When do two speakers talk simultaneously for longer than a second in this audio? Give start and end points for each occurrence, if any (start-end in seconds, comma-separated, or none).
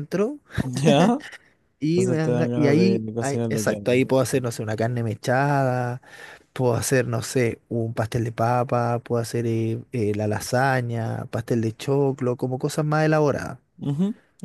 1.9-4.1